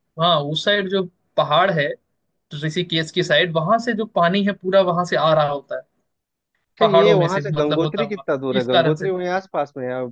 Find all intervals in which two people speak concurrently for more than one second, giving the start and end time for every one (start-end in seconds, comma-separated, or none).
6.8-9.1